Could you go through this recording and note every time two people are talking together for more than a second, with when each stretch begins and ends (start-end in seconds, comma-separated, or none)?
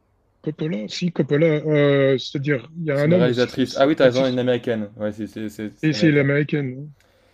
2.9-4.4